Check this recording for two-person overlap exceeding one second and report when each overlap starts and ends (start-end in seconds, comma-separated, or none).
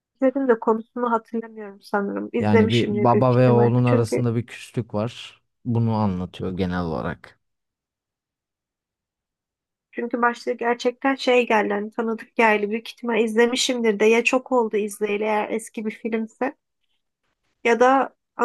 2.4-4.2